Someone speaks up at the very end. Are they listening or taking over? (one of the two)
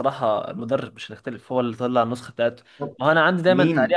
listening